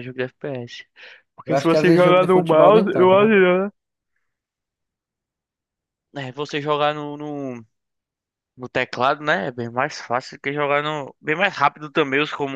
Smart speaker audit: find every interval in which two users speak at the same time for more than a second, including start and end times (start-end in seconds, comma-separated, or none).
1.4-3.4